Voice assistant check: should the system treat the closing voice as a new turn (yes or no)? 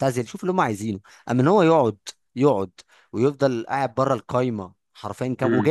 no